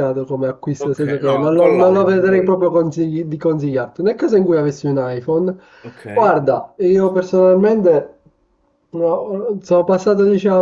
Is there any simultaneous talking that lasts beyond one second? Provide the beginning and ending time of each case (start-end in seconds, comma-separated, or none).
0.8-2.5